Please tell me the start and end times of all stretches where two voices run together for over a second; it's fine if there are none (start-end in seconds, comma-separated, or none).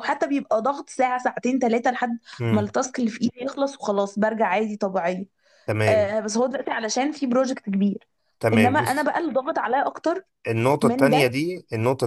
none